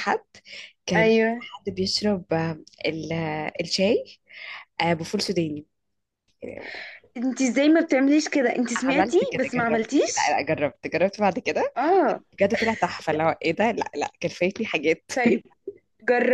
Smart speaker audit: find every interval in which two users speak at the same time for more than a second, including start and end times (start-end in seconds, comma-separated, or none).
8.8-10.4